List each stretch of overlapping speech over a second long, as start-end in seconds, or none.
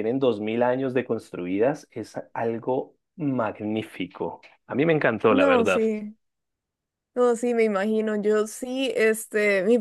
none